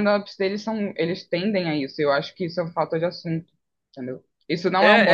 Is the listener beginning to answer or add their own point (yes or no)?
yes